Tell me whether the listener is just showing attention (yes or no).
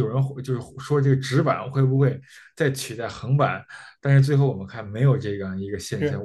no